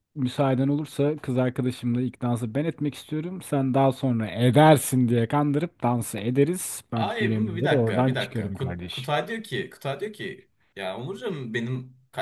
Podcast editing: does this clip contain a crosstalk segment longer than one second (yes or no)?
yes